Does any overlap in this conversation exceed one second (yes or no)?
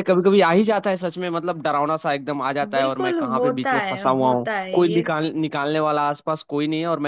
yes